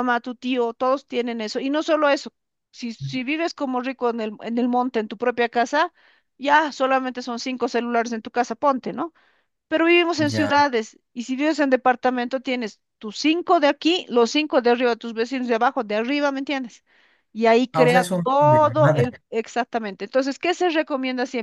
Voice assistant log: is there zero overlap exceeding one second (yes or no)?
no